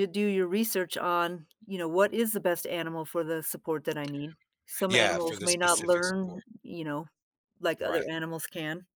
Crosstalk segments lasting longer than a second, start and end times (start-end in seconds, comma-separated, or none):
4.9-6.4